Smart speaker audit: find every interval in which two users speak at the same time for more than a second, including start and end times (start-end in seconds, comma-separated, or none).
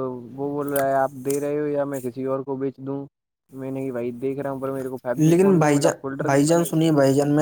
5.2-6.7